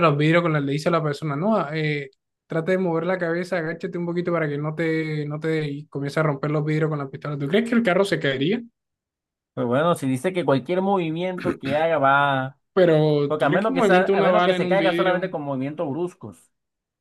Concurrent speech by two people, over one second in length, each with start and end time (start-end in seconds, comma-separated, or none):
13.3-15.3